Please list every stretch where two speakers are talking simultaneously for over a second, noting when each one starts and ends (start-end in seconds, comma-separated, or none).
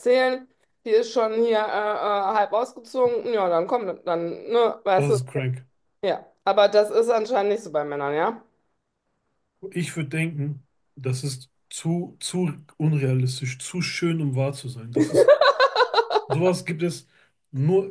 none